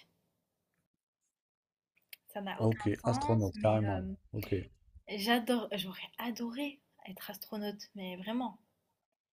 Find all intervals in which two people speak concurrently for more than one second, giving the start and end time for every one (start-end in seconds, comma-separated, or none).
2.6-4.0